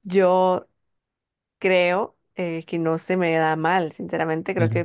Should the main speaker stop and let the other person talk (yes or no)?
no